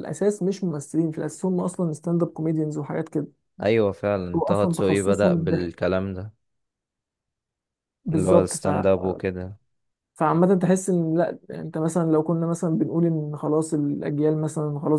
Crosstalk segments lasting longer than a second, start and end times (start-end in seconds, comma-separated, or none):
4.3-5.7